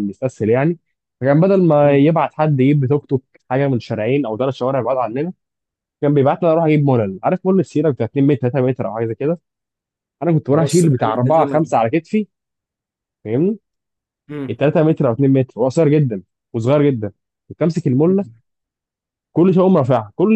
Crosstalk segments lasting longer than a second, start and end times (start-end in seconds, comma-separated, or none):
10.5-11.7